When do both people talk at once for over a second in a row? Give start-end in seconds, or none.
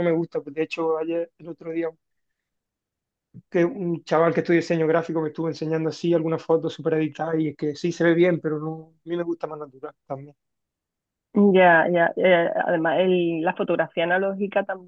none